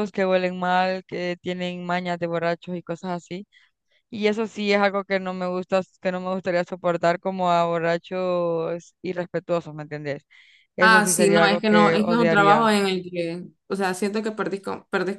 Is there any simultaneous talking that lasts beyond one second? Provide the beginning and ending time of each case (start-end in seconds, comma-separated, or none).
10.8-12.7